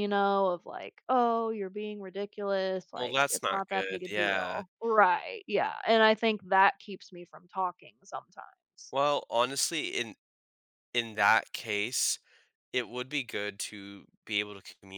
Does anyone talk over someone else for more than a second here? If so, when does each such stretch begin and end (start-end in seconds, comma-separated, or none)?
3.0-4.6